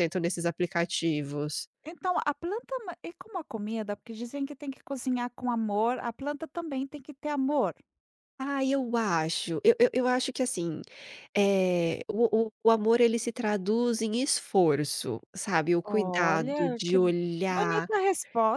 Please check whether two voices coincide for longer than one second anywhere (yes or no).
yes